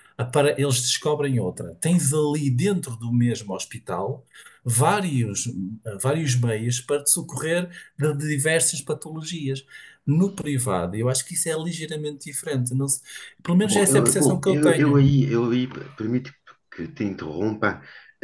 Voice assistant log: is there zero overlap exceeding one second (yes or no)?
no